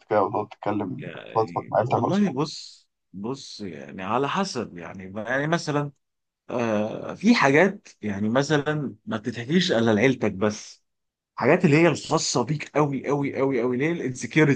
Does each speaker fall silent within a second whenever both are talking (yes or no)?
no